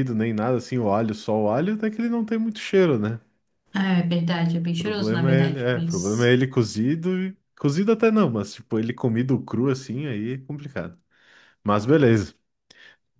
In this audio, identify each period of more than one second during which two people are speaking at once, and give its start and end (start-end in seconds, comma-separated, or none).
4.8-6.3